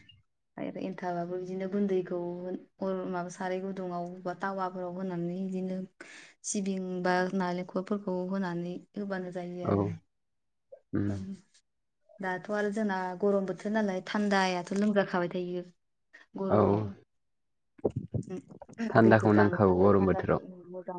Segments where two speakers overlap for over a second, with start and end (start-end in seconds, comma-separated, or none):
19.0-20.4